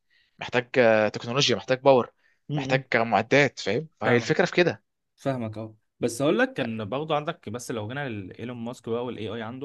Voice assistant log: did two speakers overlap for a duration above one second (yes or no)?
no